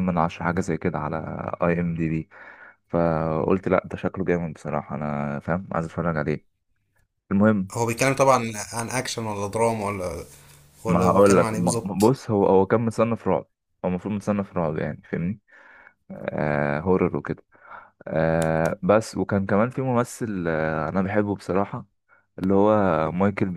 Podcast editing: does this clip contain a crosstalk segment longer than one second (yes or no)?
yes